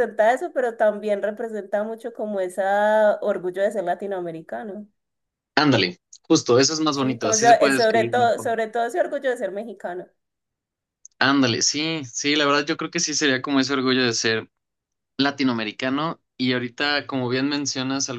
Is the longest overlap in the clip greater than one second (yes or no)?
yes